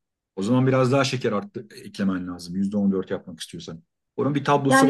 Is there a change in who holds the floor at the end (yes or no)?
yes